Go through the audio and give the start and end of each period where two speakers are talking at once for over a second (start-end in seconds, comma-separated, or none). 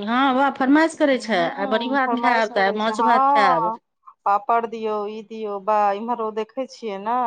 1.1-3.7